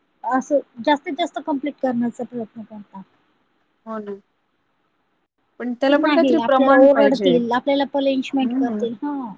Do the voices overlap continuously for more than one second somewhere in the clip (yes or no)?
yes